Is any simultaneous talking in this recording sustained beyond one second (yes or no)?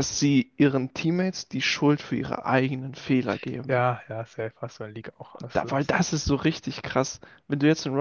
no